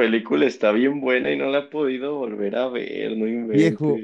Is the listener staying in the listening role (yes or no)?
no